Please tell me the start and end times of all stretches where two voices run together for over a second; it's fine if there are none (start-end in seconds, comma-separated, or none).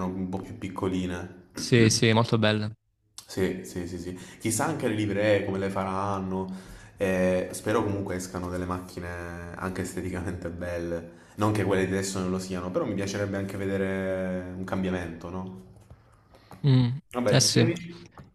none